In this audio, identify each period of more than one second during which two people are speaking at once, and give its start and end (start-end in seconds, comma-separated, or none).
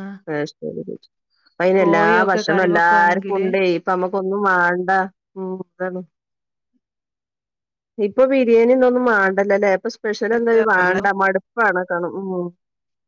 1.8-3.5